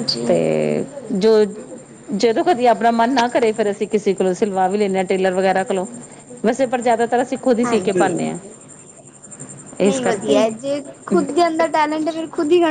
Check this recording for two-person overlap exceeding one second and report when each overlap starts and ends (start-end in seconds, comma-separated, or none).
none